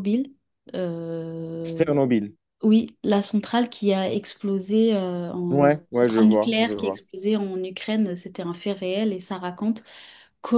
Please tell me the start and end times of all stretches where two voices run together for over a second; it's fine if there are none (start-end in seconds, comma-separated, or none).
5.5-7.0